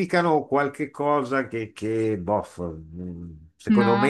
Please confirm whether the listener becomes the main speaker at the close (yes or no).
no